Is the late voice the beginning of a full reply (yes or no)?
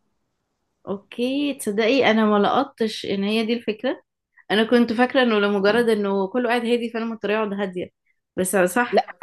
no